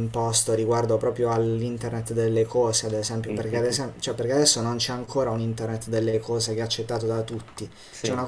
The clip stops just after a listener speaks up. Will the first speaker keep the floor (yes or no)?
yes